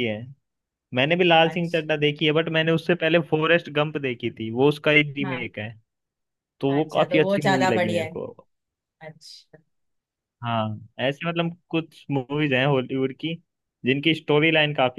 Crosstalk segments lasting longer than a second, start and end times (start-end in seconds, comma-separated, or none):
6.7-8.2